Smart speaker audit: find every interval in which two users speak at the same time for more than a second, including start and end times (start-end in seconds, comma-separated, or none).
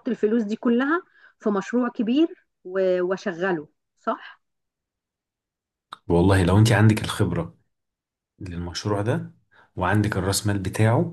none